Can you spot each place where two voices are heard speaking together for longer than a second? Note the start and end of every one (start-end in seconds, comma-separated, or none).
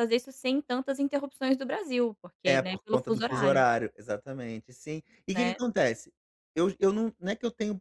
2.5-3.6